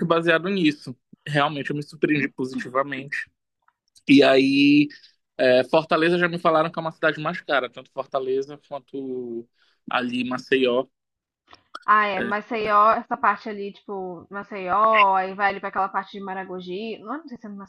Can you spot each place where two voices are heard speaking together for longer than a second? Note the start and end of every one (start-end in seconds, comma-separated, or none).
none